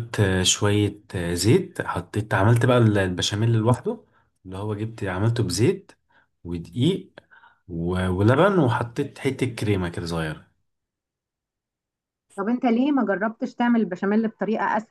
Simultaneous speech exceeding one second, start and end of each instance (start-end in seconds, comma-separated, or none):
none